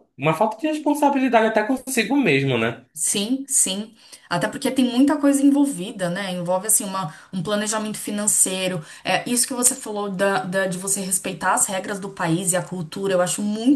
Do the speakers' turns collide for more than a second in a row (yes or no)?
no